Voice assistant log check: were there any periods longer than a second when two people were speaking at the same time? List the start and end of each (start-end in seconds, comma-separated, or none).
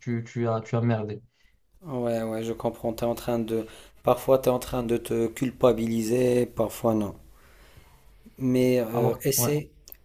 none